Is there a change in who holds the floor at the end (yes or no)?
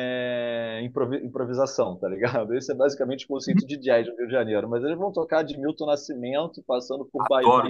no